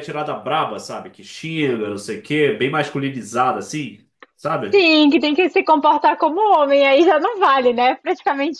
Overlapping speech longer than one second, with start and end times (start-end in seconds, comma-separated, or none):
none